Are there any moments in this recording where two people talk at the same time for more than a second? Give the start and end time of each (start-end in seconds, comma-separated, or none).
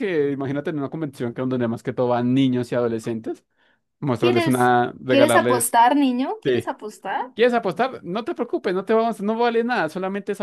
4.2-5.8